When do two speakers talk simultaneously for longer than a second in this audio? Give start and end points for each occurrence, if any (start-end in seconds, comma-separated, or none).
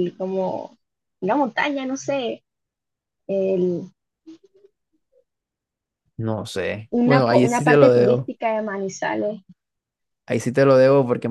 6.9-8.3